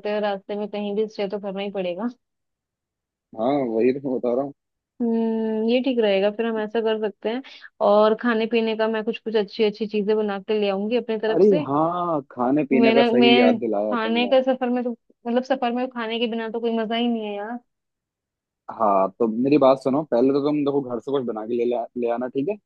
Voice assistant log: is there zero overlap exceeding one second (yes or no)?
no